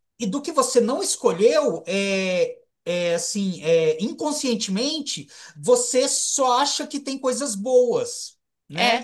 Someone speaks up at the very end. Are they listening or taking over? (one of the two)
listening